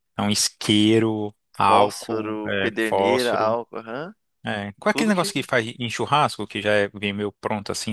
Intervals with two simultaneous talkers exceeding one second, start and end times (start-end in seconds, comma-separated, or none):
1.7-3.6